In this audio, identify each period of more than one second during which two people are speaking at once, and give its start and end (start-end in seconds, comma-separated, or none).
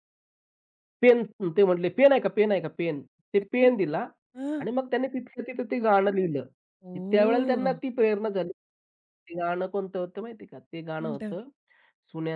none